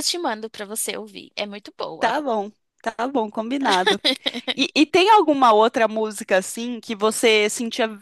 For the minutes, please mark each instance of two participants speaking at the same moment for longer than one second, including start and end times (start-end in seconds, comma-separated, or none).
none